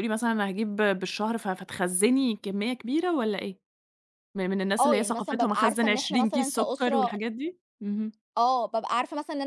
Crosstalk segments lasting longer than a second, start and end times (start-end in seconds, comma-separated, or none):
4.8-7.1